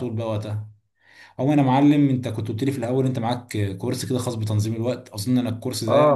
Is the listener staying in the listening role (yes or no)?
yes